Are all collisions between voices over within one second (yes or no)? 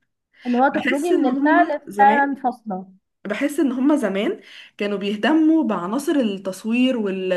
no